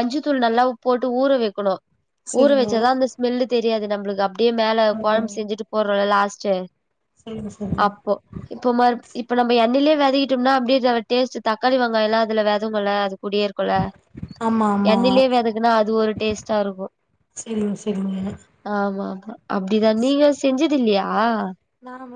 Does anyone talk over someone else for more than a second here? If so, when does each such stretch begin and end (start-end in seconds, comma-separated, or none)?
none